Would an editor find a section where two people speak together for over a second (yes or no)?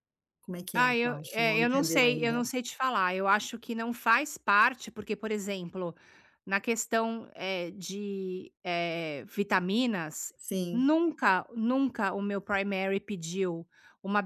yes